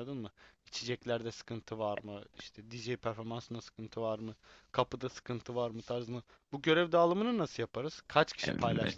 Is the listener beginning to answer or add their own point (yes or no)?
yes